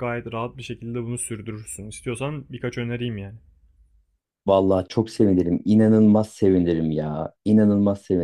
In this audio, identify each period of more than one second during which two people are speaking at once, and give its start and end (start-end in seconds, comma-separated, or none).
none